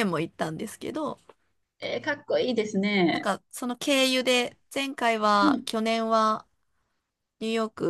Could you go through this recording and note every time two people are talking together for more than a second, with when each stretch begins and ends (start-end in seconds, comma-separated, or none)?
none